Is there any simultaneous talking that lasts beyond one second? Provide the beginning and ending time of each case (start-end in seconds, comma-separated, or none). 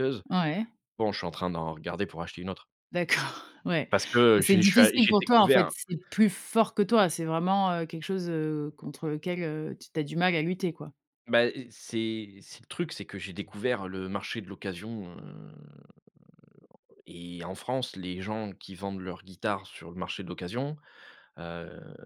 4.4-5.7